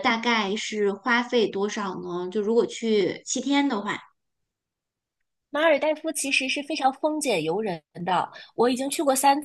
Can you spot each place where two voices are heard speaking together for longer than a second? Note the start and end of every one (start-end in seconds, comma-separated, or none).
none